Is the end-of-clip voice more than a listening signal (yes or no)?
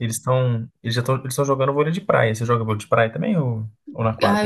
yes